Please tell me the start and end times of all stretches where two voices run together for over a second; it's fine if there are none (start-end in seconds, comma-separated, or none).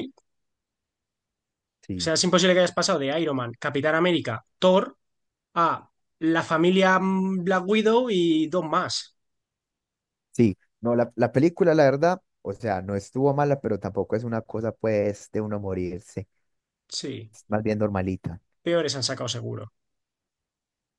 none